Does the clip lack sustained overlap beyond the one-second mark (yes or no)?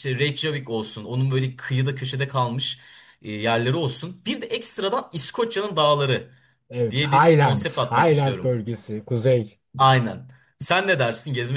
no